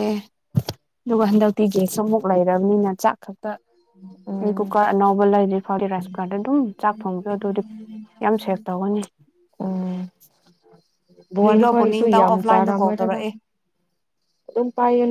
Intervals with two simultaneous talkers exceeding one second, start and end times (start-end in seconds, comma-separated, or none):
11.4-13.2